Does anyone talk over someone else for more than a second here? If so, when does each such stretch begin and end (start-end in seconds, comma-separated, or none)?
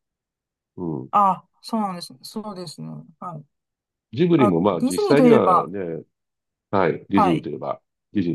4.4-5.7